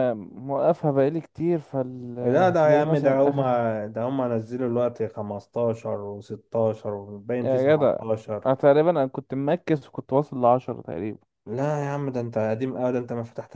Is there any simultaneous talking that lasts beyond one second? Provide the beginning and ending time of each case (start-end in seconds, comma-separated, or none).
2.2-3.6